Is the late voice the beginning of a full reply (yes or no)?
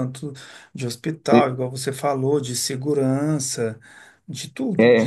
yes